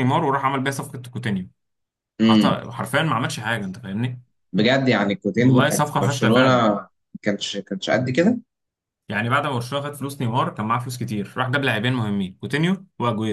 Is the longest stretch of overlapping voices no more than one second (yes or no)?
no